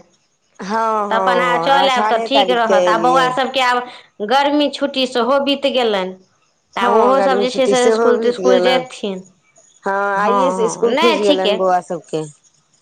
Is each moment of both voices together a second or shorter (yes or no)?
no